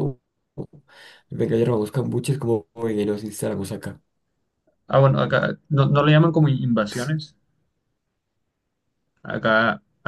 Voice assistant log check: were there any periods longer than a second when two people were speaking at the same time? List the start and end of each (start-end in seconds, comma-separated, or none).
none